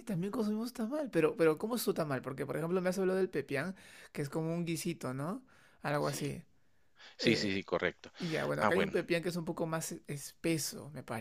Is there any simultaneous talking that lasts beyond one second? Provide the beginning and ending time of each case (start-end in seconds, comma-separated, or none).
none